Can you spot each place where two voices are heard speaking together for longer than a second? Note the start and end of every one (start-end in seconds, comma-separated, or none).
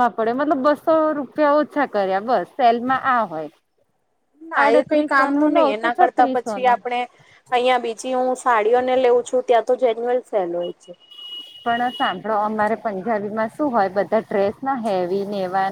4.6-6.7